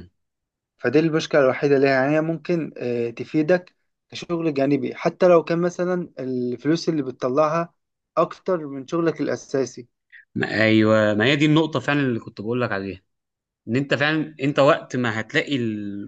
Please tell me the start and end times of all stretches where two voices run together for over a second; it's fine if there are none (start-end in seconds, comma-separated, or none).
none